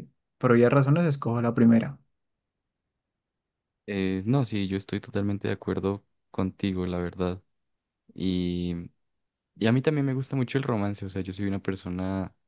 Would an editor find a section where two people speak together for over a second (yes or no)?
no